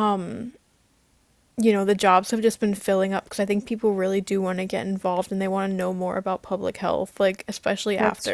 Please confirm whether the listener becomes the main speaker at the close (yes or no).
no